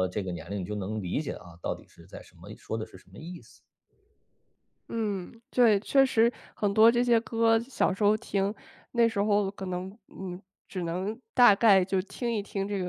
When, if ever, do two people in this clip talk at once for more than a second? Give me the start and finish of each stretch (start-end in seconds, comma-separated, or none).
none